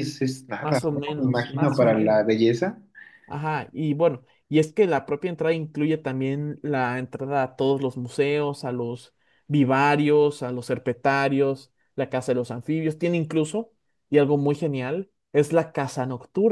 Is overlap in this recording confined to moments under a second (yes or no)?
no